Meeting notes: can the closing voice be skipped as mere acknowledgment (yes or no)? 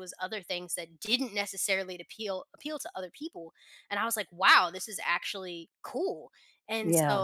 yes